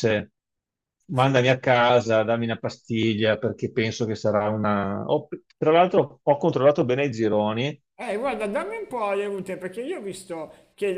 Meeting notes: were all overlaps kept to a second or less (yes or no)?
yes